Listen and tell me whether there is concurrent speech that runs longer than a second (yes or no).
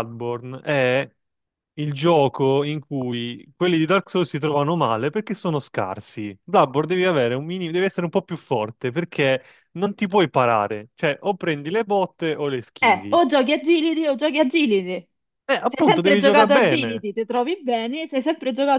yes